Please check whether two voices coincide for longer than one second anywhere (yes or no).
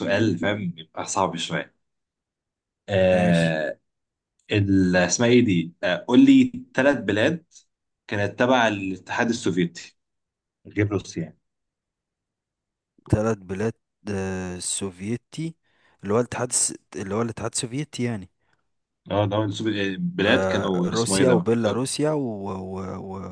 yes